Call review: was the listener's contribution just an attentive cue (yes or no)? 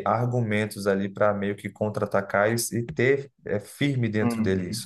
no